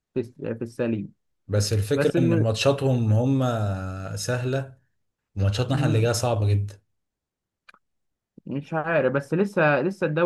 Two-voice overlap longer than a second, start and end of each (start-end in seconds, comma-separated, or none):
none